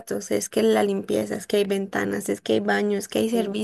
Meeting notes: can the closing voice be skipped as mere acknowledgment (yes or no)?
yes